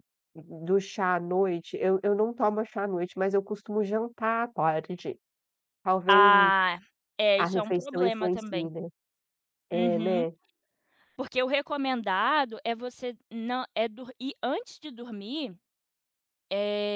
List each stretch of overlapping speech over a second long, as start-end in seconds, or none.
7.4-8.7